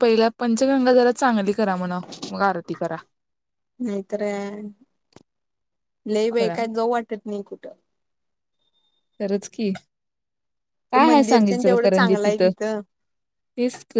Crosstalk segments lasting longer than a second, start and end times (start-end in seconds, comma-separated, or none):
10.9-12.4